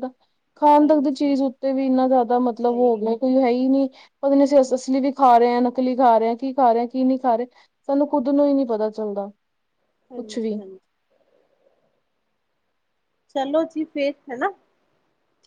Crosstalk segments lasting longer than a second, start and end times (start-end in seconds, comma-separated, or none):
none